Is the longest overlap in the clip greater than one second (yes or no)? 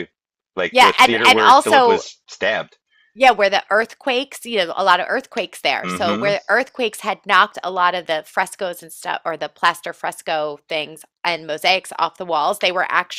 yes